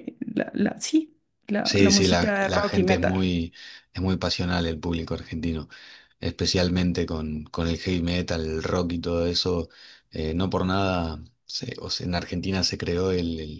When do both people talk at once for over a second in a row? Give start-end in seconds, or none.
1.6-3.1